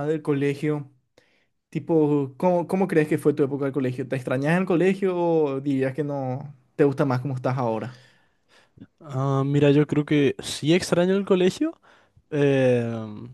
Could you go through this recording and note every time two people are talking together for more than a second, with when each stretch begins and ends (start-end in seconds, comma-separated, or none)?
none